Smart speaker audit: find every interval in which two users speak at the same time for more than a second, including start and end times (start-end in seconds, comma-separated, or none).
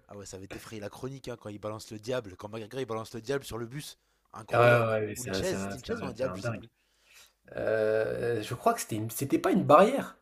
4.5-6.7